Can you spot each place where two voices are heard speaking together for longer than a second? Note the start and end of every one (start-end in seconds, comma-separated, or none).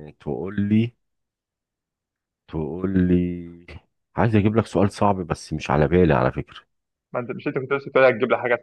none